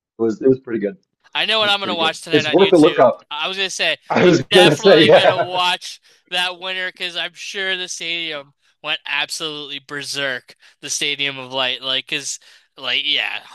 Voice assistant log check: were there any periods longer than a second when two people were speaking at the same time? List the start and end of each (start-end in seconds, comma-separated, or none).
1.6-3.2, 4.1-5.6